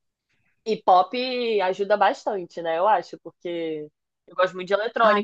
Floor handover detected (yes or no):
no